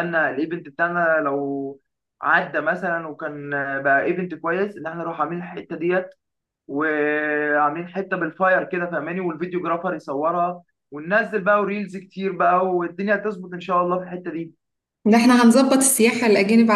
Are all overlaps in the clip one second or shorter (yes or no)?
yes